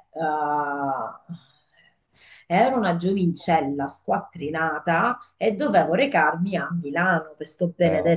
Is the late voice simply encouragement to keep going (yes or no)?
yes